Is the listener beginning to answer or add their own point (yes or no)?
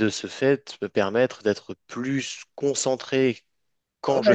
yes